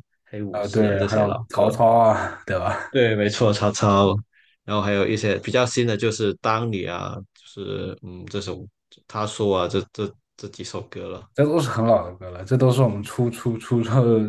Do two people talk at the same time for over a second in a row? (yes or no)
yes